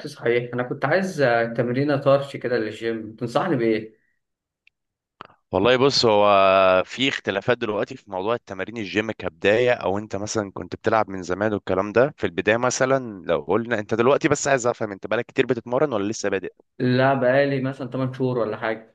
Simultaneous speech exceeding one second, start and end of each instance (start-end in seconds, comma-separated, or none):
none